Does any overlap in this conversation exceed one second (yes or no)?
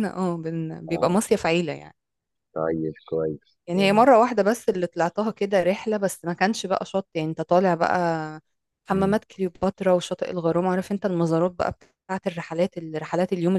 no